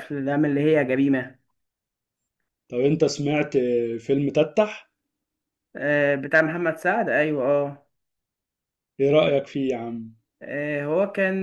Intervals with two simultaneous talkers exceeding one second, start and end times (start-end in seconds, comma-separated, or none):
none